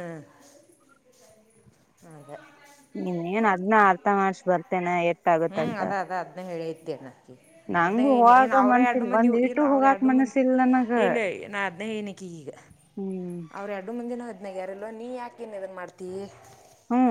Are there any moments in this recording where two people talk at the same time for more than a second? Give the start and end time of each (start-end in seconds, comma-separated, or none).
7.8-10.4